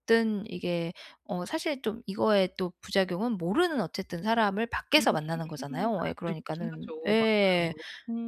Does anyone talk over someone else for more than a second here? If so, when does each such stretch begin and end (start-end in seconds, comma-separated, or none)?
6.0-7.7